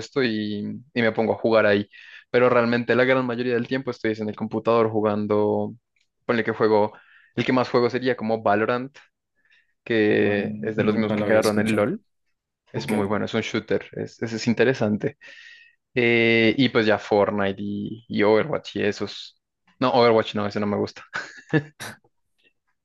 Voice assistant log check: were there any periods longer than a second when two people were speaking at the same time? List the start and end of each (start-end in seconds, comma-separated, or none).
10.1-11.9